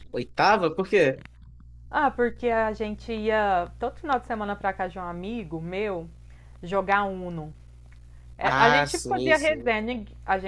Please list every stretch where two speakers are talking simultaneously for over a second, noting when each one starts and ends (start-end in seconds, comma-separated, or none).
8.4-9.7